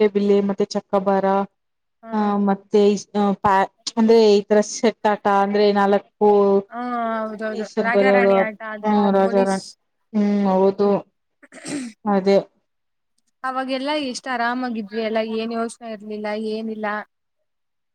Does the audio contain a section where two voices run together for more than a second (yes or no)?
yes